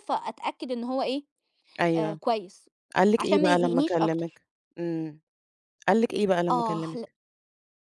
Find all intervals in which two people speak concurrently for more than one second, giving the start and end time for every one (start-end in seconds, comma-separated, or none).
3.2-4.4